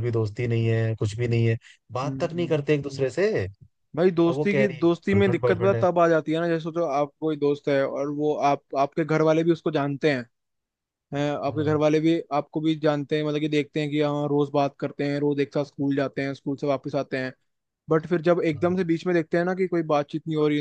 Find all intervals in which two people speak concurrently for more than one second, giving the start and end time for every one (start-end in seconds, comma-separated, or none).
4.0-5.8